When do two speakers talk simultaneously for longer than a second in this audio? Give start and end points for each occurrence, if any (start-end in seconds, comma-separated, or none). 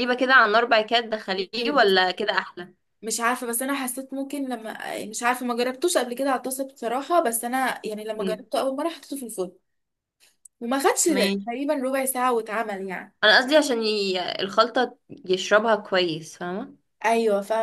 none